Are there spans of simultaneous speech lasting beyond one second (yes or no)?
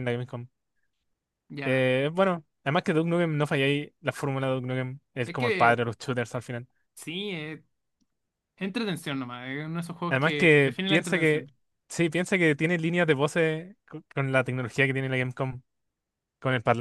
yes